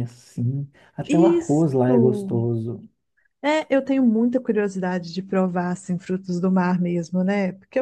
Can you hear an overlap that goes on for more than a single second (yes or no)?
yes